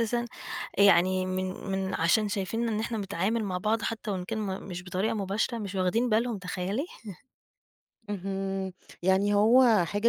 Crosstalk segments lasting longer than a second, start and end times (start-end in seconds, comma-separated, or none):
none